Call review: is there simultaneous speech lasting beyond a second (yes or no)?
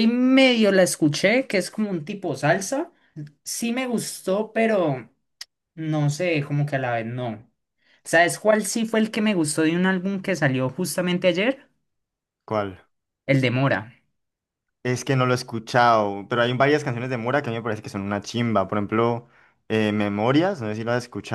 no